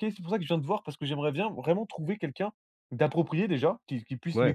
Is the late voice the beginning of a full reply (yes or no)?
no